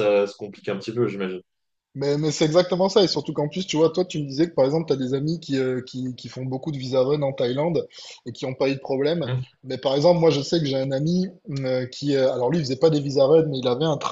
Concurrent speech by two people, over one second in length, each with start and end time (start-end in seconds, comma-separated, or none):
none